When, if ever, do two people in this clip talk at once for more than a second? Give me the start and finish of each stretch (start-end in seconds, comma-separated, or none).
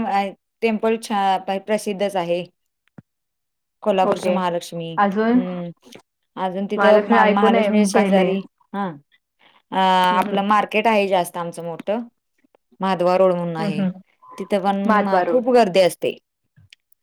6.8-8.3